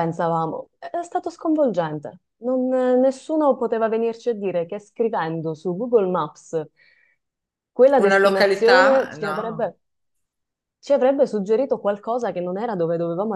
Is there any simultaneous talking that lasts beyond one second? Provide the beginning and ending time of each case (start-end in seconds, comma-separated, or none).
8.0-9.7